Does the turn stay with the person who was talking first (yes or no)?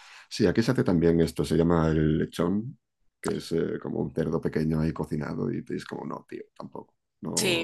no